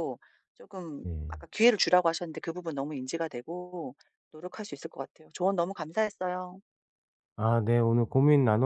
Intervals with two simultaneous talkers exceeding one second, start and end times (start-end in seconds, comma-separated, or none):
none